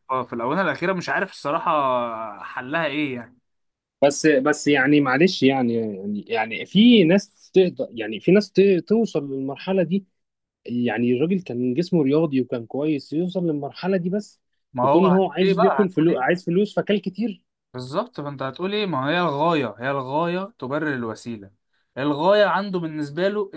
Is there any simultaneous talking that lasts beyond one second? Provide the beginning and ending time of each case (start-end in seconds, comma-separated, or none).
14.8-16.2